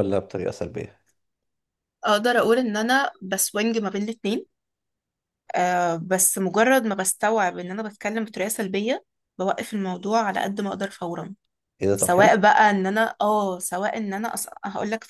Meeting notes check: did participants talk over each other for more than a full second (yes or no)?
no